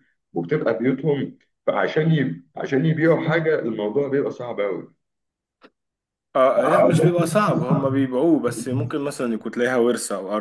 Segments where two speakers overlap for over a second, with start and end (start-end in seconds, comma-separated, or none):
none